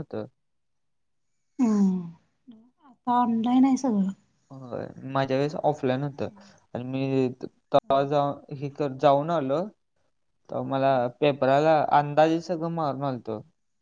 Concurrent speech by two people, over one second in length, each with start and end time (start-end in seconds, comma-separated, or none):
none